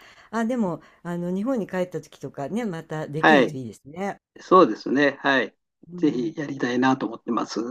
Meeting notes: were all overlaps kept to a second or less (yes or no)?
yes